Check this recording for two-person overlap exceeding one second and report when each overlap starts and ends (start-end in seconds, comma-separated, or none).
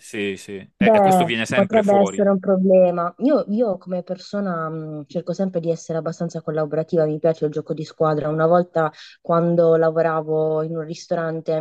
0.8-2.3